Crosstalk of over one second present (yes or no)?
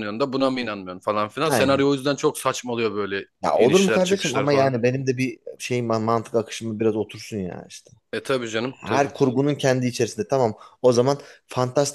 yes